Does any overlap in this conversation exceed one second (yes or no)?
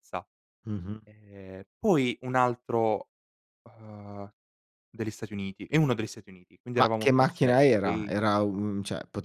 yes